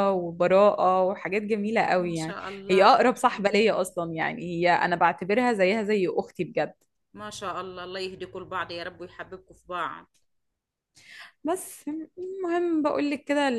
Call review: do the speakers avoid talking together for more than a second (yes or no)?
no